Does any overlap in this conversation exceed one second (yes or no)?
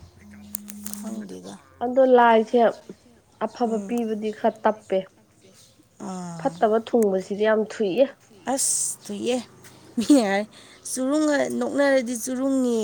no